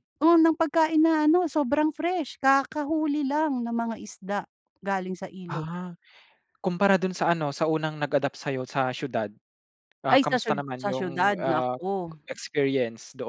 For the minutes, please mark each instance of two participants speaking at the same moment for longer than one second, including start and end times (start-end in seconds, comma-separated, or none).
10.1-11.8